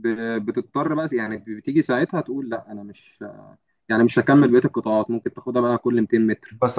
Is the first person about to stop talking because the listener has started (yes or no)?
yes